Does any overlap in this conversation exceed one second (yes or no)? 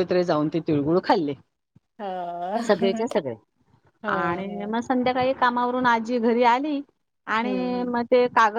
no